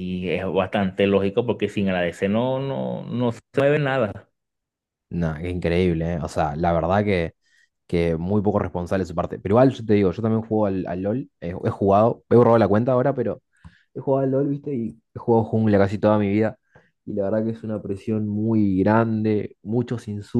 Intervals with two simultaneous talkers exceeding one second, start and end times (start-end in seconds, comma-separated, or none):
none